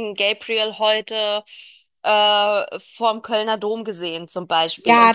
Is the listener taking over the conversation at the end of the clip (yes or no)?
yes